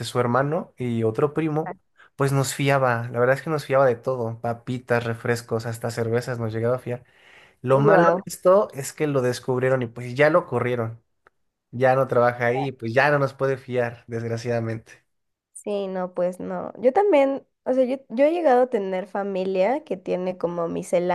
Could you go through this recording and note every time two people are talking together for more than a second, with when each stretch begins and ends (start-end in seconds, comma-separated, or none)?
none